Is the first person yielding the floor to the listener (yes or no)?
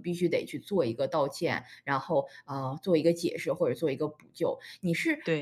no